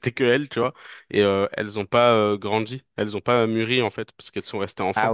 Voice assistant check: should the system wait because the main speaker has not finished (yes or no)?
no